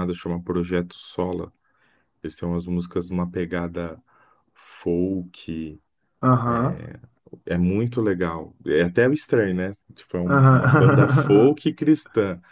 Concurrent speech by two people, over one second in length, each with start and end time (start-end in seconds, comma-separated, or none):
10.2-11.6